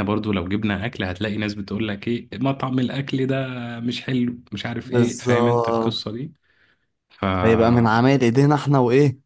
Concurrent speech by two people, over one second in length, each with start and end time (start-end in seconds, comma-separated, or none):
4.8-6.0